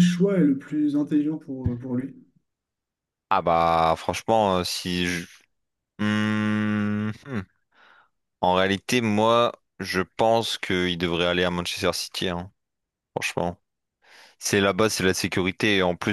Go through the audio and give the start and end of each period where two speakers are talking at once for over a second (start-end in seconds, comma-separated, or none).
none